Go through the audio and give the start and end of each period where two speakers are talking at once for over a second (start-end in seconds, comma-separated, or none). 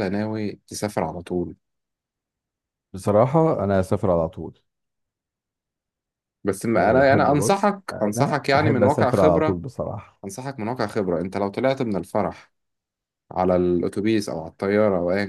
6.8-9.6